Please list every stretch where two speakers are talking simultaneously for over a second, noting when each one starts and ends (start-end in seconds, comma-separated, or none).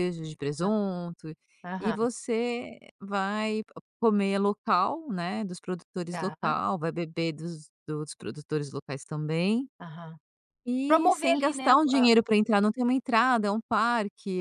10.9-12.1